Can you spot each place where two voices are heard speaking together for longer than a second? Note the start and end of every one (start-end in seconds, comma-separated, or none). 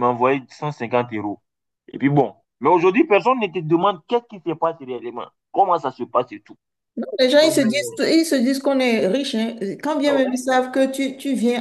none